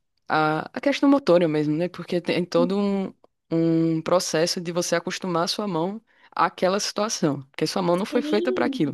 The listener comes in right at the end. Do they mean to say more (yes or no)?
yes